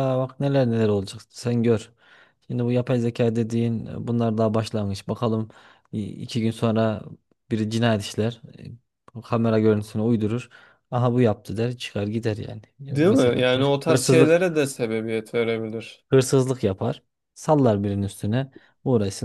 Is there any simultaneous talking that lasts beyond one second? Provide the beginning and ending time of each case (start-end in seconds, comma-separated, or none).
12.9-14.4